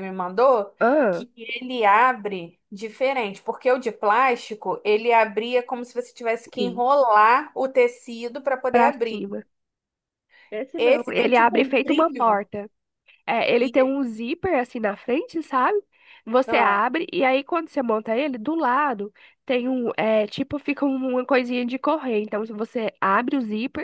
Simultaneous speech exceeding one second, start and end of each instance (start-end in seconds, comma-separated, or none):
10.8-12.4